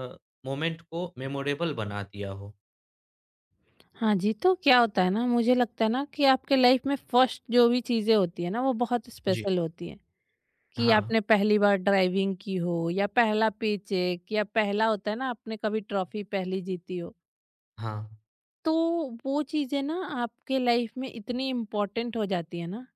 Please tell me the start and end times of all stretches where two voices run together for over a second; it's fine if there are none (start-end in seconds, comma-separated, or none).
none